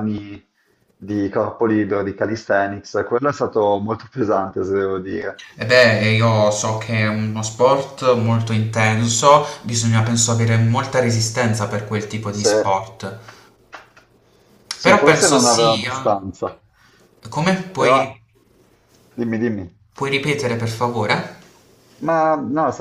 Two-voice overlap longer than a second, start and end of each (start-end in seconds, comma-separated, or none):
14.8-16.2